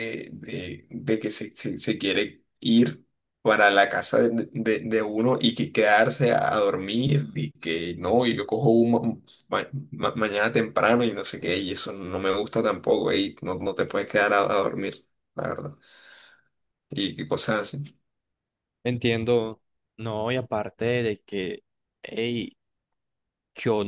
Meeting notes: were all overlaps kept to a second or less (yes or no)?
yes